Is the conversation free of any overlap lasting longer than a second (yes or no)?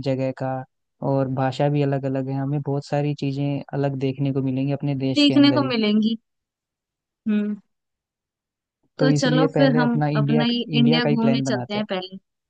no